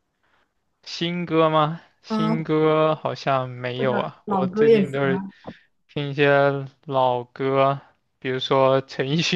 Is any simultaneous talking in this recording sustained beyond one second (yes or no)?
yes